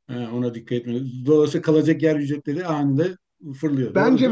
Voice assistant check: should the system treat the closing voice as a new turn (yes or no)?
yes